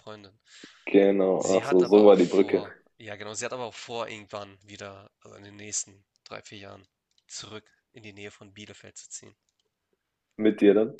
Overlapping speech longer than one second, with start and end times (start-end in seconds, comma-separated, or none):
1.4-2.6